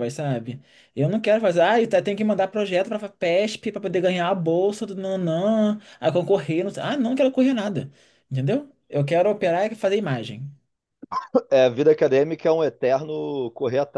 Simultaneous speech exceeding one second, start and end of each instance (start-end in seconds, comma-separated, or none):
none